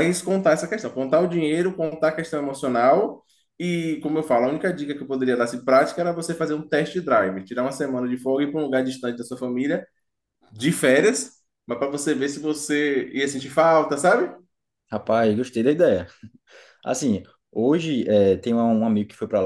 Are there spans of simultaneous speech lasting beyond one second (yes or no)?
no